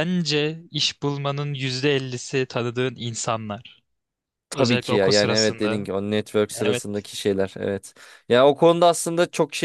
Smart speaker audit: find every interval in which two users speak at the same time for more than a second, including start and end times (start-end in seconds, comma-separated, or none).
4.5-5.9